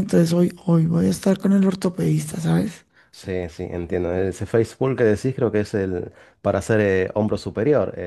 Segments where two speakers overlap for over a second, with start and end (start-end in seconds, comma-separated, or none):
none